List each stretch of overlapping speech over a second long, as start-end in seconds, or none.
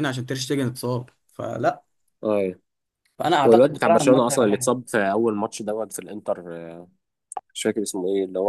3.4-4.7